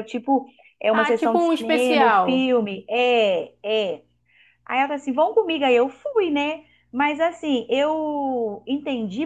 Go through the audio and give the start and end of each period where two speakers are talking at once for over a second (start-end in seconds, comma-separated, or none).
0.9-2.5